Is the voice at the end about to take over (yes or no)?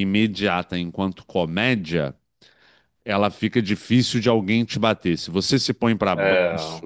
no